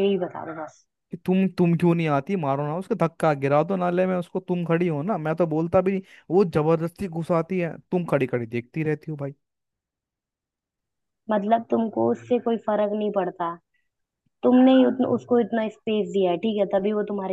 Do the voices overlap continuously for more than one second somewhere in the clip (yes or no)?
no